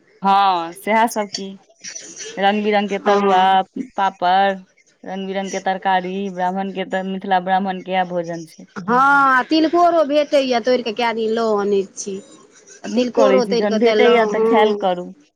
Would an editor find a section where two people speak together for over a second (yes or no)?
yes